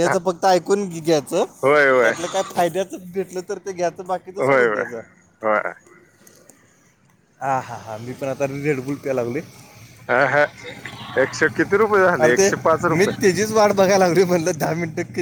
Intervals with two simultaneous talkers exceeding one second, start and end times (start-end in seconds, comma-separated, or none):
none